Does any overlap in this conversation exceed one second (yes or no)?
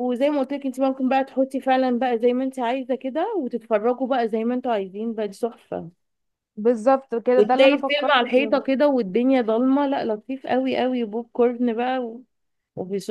yes